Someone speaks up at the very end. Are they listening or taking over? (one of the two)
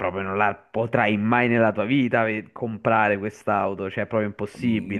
taking over